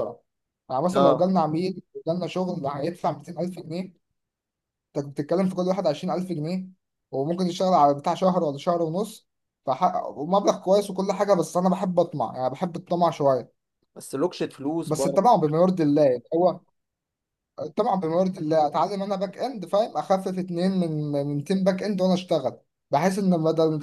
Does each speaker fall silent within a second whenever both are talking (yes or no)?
yes